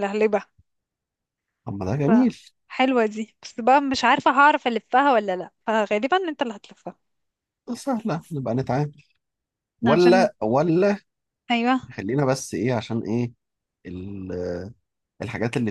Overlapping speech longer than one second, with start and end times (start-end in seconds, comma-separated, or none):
none